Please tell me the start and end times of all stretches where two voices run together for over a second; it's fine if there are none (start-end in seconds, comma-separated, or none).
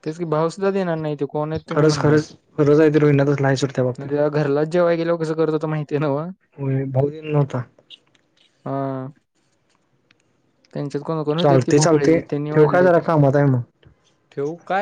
11.4-12.9